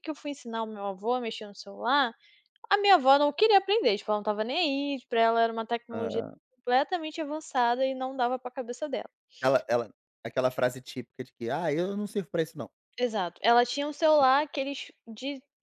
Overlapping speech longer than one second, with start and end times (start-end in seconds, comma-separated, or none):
none